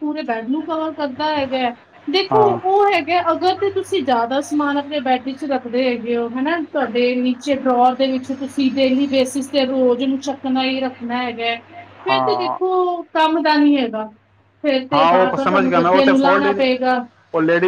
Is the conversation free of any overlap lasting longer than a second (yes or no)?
no